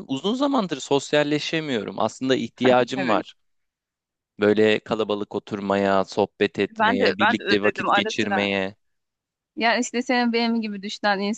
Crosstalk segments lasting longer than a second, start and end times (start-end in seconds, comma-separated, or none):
6.8-8.5